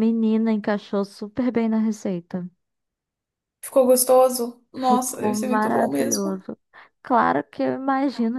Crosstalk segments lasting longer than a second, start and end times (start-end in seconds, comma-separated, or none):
4.8-6.4